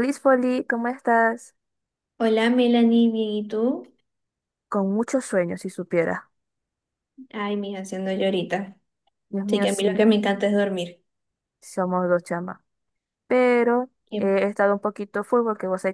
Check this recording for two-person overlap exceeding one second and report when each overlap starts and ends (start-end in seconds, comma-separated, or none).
none